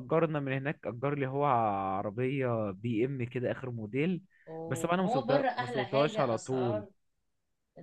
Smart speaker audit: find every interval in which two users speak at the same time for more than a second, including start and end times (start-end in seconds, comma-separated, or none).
4.7-6.8